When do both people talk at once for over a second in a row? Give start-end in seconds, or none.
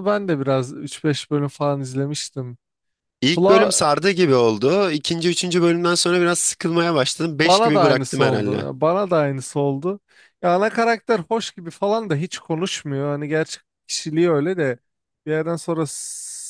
7.3-8.7